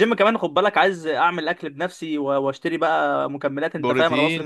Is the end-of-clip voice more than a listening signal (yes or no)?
yes